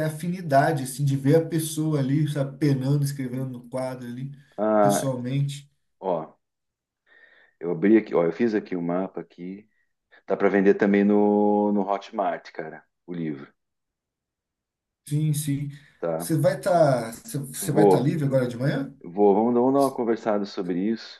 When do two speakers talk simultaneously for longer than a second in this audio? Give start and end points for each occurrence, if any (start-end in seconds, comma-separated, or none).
none